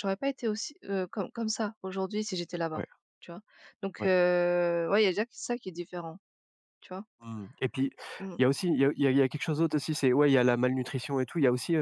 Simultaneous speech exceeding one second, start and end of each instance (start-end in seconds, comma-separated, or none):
none